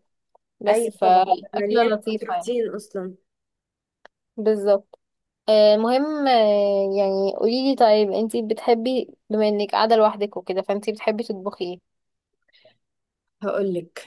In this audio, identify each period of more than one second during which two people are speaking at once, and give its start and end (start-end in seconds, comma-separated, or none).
0.7-2.5